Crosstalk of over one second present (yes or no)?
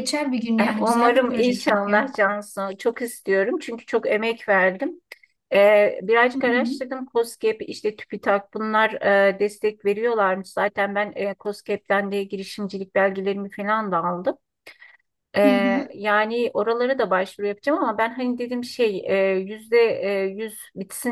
yes